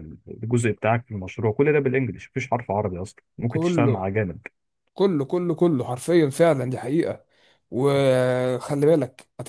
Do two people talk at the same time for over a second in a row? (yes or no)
no